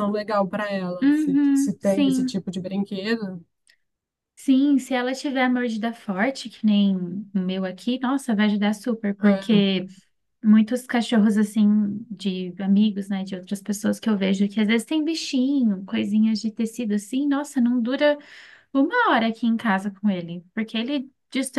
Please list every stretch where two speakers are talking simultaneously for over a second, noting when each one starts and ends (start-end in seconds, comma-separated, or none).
1.0-2.4